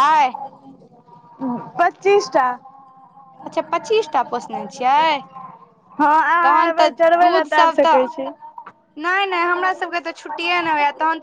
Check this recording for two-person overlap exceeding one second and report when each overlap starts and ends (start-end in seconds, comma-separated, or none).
6.5-8.3